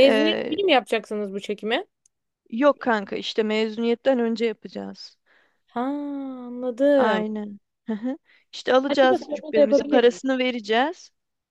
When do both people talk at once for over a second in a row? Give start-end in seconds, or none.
8.9-10.2